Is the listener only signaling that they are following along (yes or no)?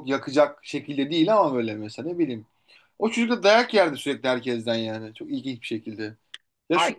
no